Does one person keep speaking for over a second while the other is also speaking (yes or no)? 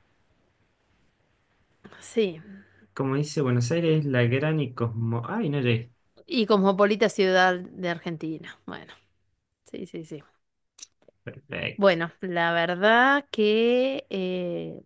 no